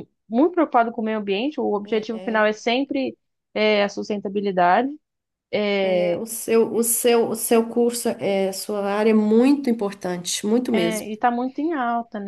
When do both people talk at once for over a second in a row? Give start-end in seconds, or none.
none